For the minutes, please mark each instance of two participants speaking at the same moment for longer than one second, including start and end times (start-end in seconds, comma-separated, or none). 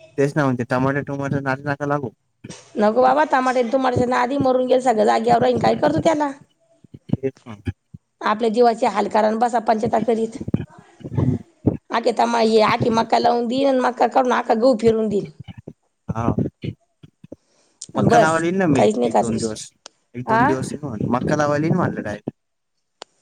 18.0-19.6